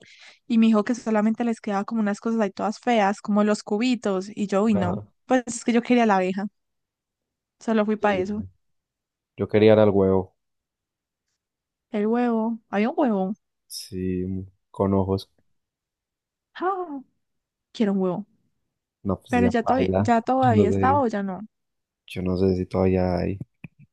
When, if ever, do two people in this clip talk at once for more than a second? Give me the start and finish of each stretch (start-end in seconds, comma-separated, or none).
19.3-21.1